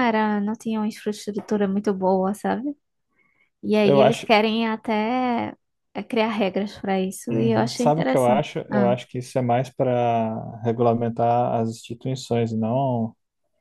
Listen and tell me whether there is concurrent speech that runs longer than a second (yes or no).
yes